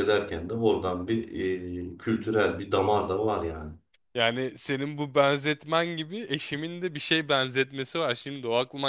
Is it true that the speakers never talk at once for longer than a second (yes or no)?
yes